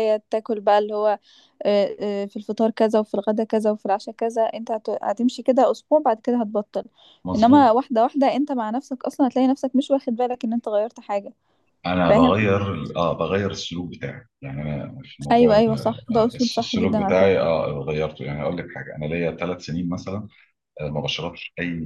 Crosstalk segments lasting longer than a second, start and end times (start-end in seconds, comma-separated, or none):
15.3-17.5